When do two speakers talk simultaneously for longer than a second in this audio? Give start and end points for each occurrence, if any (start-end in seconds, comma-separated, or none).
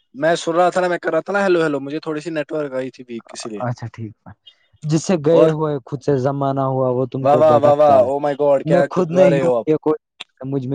7.2-9.7